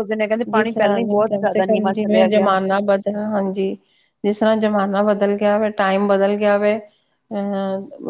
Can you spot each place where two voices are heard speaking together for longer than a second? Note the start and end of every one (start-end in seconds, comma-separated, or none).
0.5-2.5